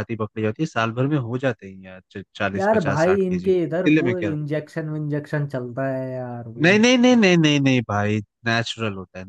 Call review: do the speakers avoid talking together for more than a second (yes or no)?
no